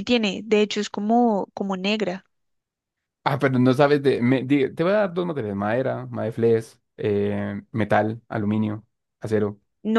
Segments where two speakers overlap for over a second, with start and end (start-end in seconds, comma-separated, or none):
none